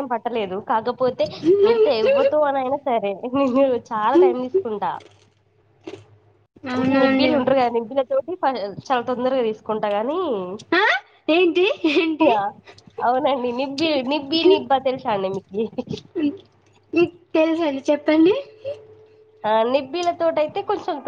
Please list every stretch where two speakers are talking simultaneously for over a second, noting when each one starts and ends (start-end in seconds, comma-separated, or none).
none